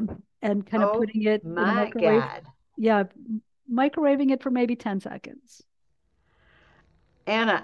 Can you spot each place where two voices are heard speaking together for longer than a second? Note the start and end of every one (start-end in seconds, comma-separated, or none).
0.8-2.2